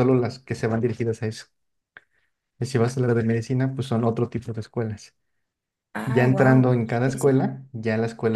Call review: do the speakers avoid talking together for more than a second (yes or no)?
no